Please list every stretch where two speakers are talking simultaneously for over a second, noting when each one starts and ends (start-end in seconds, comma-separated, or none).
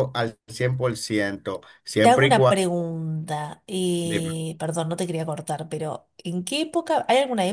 none